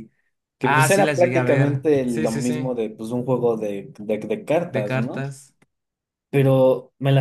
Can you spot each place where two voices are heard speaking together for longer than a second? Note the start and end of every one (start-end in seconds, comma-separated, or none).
0.6-2.7